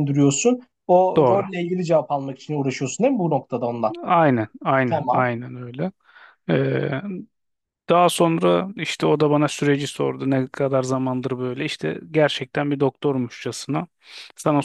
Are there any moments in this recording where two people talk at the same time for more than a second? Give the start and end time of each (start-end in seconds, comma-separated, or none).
none